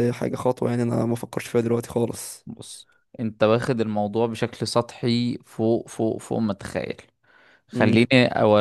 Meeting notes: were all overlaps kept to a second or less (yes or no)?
yes